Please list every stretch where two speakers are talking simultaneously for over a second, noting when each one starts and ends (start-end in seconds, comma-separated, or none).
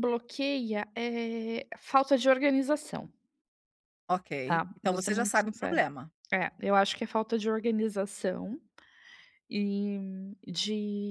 4.5-5.8